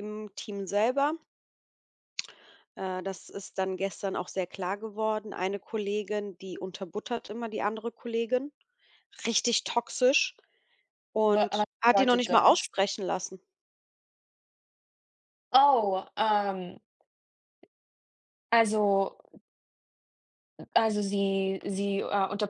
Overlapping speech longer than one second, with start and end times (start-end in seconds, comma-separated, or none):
11.2-12.7